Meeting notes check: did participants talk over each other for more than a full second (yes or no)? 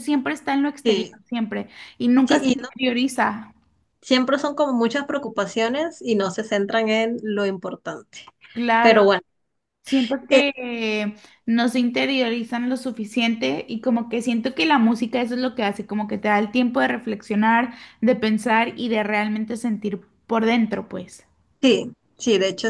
no